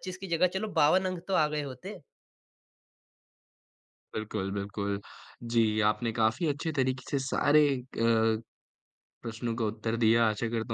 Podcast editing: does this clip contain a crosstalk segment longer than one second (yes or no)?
no